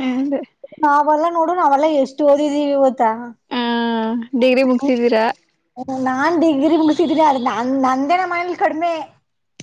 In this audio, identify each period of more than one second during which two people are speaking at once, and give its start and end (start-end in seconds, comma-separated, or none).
none